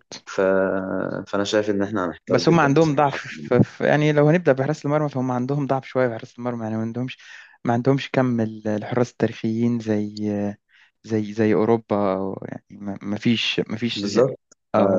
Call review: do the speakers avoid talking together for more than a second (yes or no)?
no